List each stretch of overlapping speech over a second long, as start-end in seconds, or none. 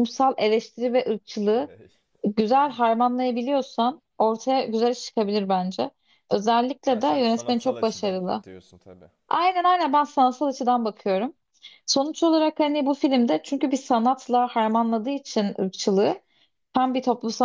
6.9-8.4